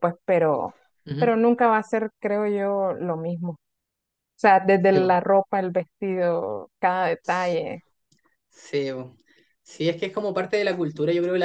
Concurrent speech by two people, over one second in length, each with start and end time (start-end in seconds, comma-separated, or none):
none